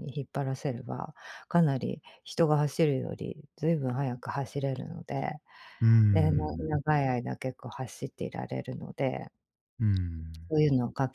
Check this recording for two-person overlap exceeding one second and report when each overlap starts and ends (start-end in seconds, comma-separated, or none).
none